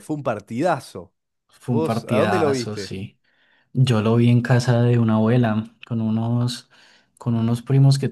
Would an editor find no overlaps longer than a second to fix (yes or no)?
no